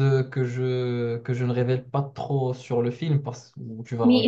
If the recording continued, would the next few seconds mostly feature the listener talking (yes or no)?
yes